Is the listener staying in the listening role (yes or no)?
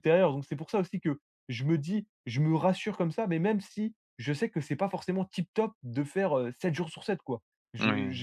yes